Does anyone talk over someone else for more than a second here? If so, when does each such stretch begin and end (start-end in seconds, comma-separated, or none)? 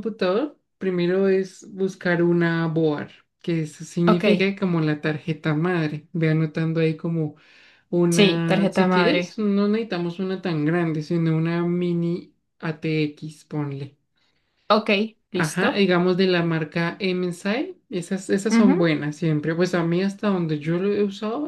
8.1-9.4